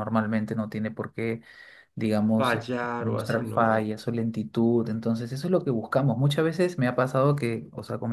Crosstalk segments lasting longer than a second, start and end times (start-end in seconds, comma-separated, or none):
2.4-3.9